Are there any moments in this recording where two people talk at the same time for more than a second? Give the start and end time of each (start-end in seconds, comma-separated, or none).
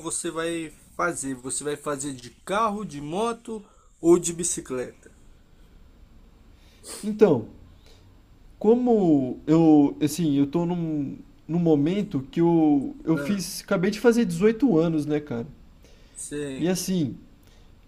none